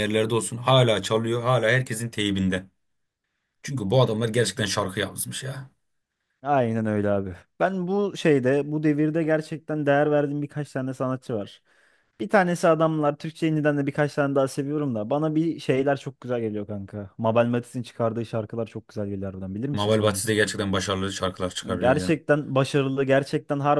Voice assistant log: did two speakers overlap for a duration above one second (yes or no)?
no